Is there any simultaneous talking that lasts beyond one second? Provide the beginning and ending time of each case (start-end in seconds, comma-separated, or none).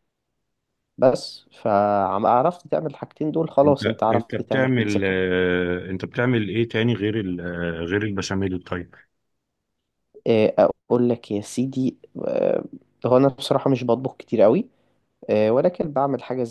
3.6-5.2